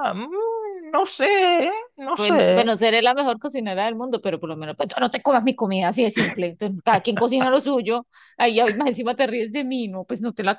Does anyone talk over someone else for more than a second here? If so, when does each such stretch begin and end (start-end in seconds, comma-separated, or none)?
none